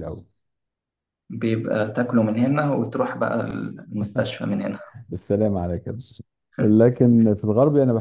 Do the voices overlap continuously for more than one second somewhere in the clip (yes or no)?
no